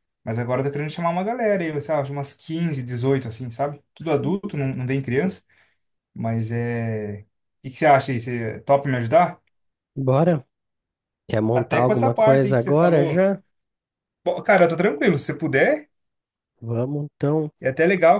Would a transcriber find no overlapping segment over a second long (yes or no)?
no